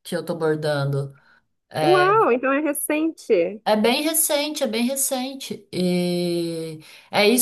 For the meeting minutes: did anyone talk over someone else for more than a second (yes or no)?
no